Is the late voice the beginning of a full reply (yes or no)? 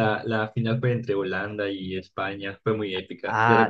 yes